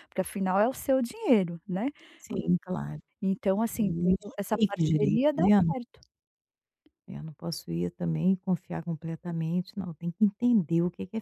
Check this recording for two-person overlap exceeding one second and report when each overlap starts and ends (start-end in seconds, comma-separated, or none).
3.8-5.6